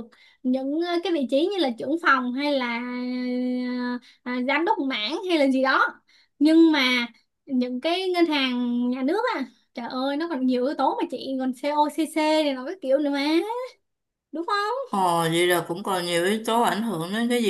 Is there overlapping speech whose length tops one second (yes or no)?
no